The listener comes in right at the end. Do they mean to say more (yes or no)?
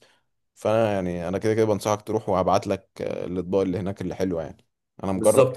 yes